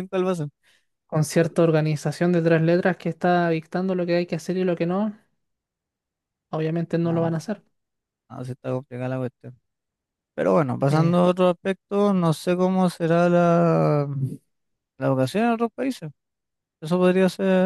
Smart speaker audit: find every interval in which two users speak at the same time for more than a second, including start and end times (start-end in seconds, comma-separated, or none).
none